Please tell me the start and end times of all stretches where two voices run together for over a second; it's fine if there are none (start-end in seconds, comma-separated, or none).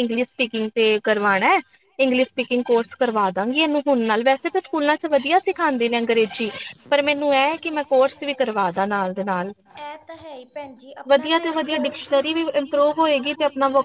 11.1-13.0